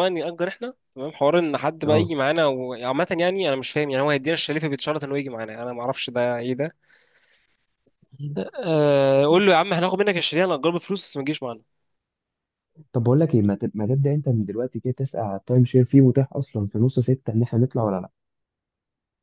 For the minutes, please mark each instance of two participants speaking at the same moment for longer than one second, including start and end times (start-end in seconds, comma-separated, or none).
none